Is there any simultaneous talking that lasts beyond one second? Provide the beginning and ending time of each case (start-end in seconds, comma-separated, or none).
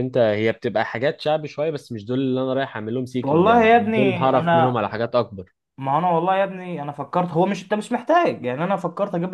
3.2-4.8